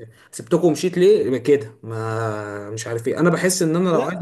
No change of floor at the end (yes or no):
yes